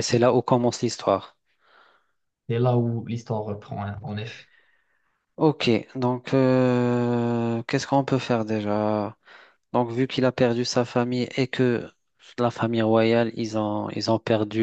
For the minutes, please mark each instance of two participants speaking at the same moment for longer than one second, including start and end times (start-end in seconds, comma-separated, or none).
none